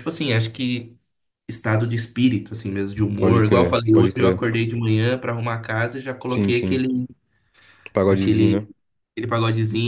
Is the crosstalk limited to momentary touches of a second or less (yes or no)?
no